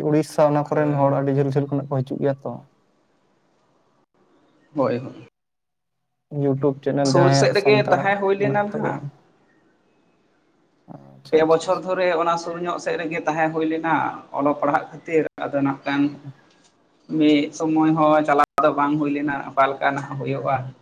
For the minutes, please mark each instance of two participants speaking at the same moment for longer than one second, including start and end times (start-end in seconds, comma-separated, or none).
7.1-9.0